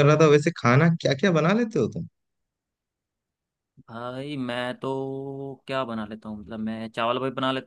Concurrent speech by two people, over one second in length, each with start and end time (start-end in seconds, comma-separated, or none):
none